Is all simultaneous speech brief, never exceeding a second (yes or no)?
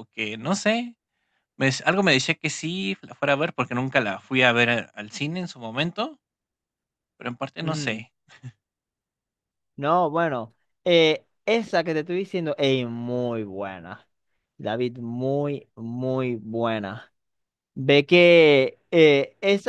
yes